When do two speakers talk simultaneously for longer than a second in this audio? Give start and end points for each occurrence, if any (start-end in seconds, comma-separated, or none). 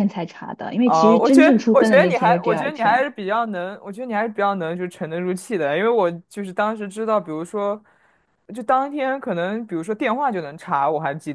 0.9-3.1